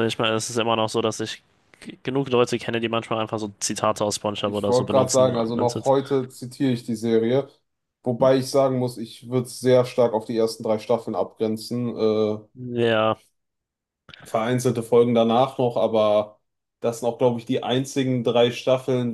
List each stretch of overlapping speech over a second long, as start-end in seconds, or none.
4.4-5.9